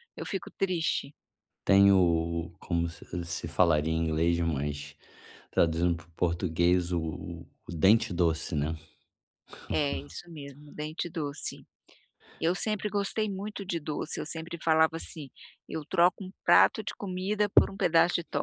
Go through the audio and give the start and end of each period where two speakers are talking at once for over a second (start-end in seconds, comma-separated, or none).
none